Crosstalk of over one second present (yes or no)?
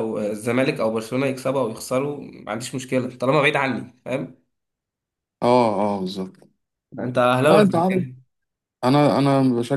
no